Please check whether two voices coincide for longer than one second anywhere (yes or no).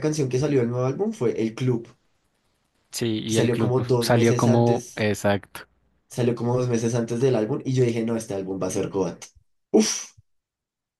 yes